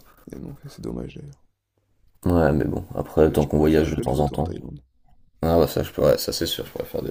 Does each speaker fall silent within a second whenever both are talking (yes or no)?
no